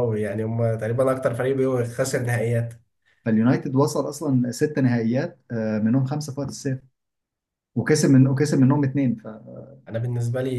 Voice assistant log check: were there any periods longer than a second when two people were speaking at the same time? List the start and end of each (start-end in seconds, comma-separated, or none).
none